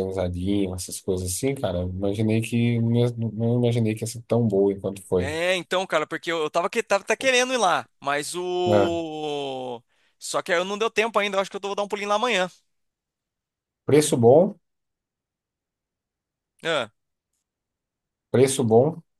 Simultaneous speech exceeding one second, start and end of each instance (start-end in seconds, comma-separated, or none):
none